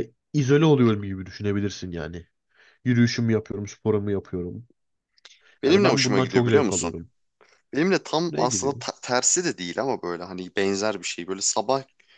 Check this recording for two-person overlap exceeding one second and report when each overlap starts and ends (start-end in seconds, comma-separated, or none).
5.7-6.9